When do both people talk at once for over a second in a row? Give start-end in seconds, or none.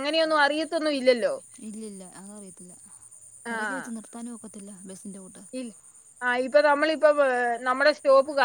none